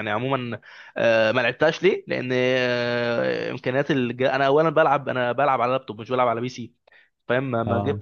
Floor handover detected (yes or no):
no